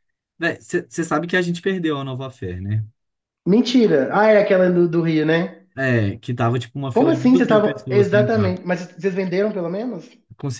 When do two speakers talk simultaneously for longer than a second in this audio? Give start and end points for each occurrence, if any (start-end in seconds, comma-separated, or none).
6.9-8.6